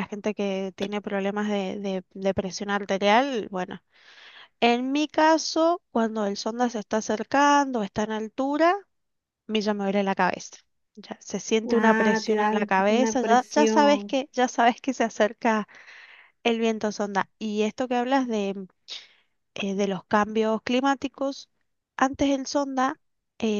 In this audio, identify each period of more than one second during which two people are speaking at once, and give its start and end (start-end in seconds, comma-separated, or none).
11.7-14.2